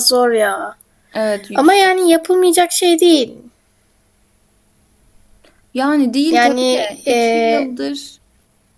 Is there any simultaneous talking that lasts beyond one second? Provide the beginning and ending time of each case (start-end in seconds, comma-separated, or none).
6.3-7.8